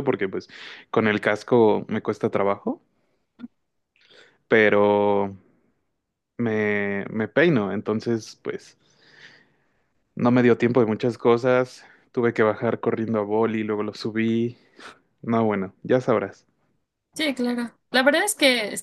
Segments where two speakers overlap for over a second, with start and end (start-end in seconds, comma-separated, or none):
none